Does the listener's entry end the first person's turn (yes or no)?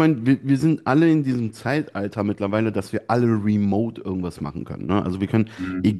no